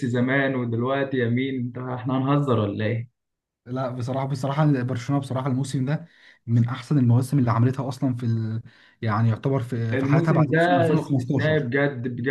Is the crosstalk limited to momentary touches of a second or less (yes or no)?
no